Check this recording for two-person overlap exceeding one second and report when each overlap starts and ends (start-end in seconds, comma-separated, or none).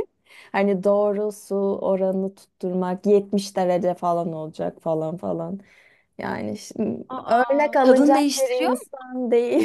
7.1-8.9